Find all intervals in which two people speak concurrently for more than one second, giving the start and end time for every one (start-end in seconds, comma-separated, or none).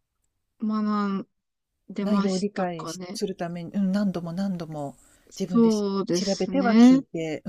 2.0-3.2, 5.5-7.0